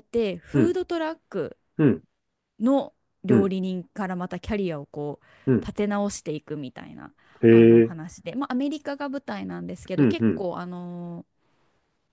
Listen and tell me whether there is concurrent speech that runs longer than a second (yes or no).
no